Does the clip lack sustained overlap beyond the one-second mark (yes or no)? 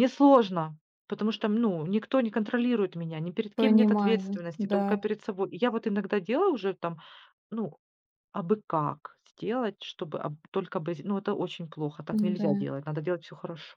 no